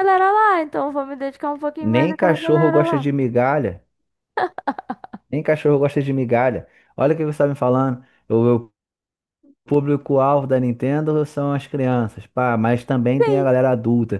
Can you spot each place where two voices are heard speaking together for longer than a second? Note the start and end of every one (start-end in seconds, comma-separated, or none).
1.8-3.1